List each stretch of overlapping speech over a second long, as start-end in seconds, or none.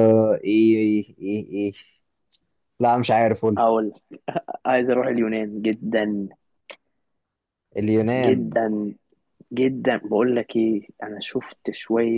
none